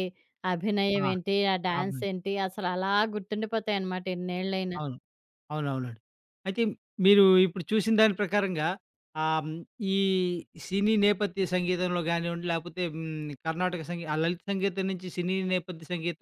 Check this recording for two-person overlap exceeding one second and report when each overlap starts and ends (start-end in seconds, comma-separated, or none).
none